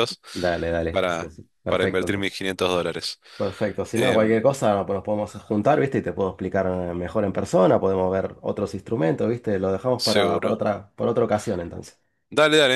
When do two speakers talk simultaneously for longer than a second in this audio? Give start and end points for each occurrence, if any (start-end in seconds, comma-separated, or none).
0.9-2.4